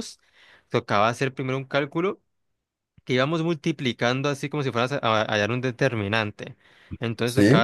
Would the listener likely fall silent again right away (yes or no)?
yes